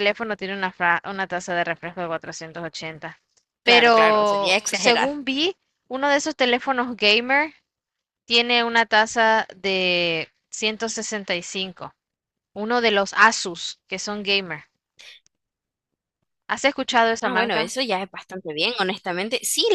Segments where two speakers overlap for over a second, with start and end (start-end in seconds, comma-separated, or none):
3.6-5.1